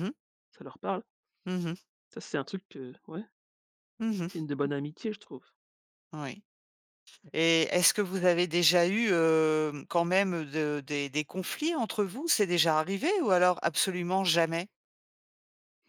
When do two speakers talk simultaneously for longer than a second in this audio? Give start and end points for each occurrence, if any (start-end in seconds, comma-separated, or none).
none